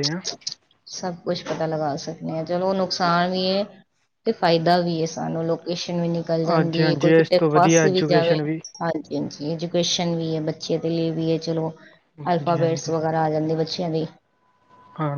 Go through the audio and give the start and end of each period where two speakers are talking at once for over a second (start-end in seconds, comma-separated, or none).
6.5-8.3